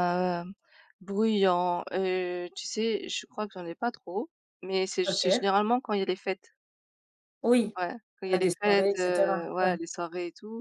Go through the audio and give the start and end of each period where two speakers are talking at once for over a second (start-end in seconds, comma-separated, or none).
8.3-9.8